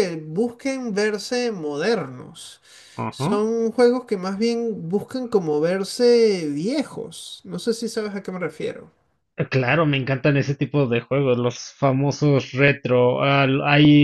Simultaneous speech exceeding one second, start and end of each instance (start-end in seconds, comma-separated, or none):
none